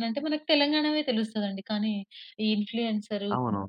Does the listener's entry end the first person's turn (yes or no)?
no